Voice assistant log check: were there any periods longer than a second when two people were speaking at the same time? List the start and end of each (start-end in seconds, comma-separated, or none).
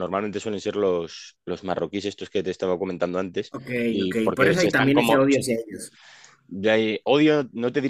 3.5-5.4